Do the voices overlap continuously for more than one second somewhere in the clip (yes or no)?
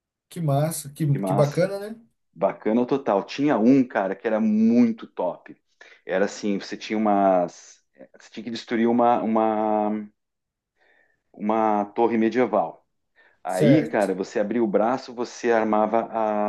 no